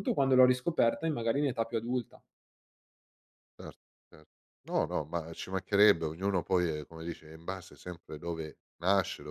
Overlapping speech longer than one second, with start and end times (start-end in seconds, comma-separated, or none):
none